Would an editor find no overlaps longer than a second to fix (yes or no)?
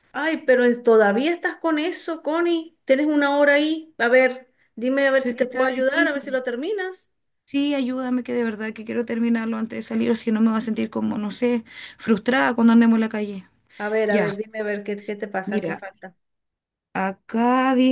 no